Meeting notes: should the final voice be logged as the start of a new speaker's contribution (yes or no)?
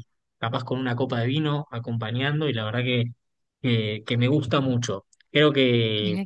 no